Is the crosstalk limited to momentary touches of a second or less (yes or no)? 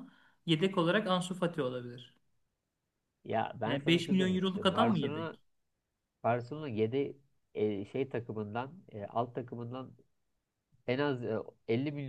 no